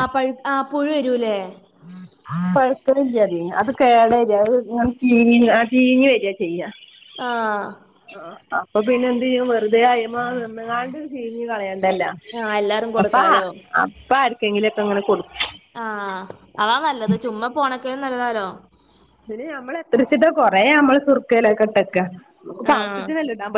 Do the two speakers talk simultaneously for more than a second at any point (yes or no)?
no